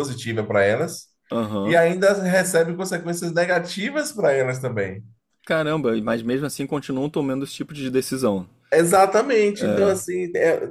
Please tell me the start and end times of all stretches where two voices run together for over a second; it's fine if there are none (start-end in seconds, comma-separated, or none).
none